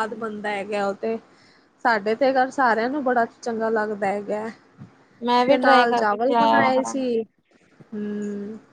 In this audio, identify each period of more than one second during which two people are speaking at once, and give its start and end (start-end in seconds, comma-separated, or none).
5.5-7.0